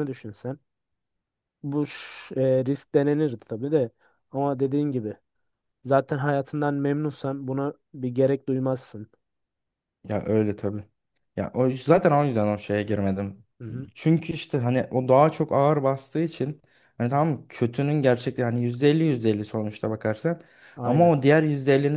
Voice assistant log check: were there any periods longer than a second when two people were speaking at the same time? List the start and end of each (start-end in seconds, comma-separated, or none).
none